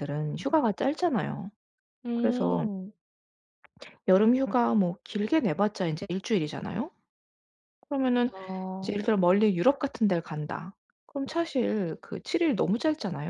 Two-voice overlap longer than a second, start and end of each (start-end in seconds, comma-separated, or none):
none